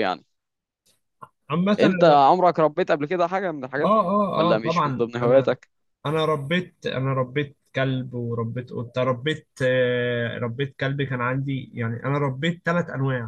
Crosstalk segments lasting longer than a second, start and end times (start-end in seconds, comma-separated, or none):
3.8-5.6